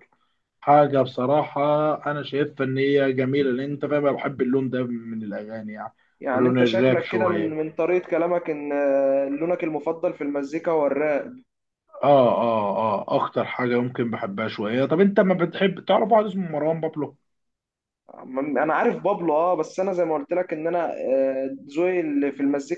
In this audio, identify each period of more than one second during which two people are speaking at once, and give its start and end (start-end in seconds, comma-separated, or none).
6.3-7.6